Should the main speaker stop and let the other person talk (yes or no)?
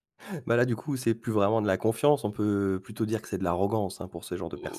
yes